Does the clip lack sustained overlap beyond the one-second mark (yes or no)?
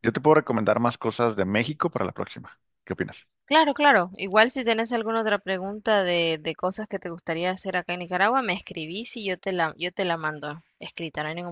yes